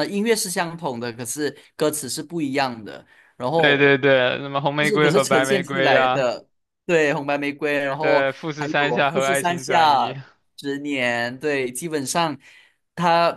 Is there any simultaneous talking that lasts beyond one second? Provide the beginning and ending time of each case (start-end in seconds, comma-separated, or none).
4.8-6.3, 8.0-10.2